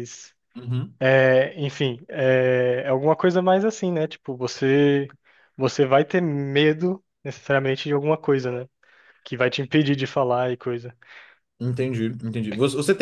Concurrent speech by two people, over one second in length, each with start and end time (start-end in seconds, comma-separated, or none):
none